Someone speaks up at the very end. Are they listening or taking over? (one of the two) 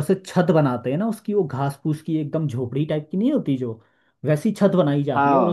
listening